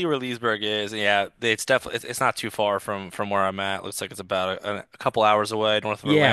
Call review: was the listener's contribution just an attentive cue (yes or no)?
no